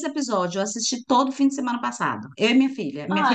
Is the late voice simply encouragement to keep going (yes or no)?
no